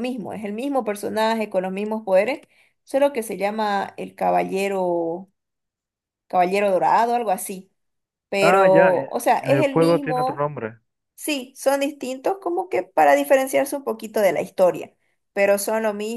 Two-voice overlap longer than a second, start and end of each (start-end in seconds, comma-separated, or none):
8.4-10.5